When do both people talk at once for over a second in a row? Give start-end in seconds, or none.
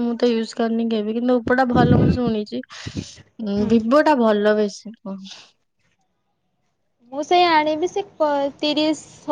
none